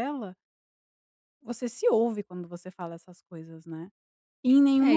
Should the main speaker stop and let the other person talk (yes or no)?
yes